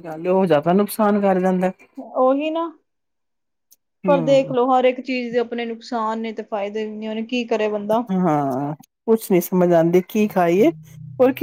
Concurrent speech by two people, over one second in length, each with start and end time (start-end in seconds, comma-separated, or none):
none